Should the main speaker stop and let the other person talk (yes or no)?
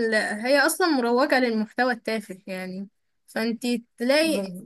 no